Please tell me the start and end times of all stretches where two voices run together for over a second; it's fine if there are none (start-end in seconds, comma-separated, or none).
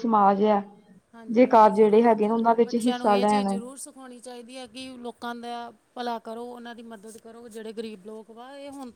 1.3-3.6